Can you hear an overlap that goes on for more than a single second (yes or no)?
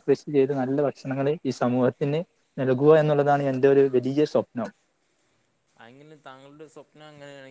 no